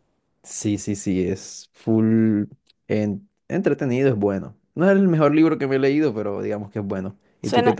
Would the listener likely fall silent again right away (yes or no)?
no